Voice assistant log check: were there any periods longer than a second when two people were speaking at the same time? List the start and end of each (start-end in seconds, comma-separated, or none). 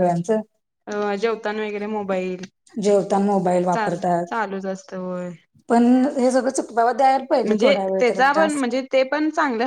none